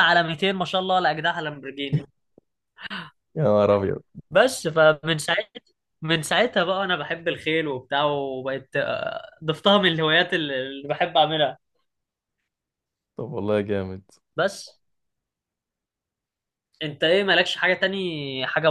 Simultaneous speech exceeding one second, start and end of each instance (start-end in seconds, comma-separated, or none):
none